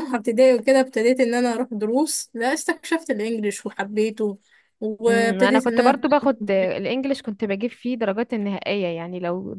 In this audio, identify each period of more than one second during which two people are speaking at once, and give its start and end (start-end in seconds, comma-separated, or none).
5.1-6.6